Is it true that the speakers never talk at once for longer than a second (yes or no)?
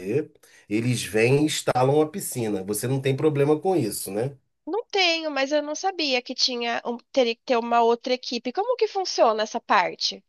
yes